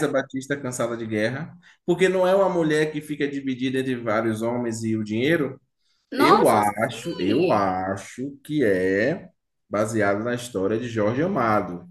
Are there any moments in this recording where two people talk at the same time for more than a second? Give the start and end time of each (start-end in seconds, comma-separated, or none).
6.2-7.9